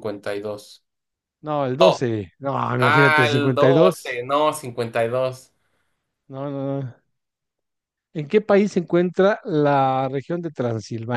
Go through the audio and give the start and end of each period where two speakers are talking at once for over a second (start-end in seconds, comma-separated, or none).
2.8-4.2